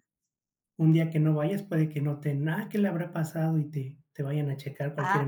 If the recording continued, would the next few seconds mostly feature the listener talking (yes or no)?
yes